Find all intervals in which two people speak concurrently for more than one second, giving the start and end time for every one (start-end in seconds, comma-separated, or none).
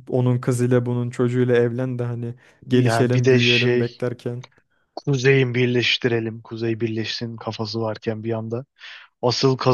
2.7-3.9